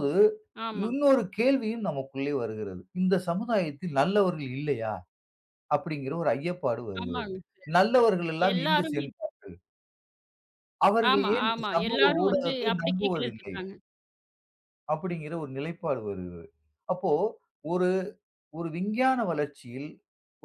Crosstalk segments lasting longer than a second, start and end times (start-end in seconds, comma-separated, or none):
11.1-13.6